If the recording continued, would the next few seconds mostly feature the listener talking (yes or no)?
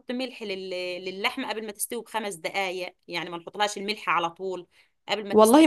yes